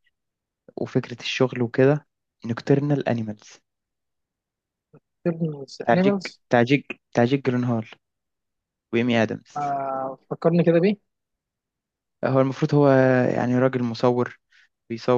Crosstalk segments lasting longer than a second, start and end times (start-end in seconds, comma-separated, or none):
none